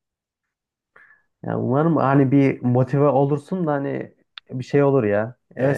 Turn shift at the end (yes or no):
yes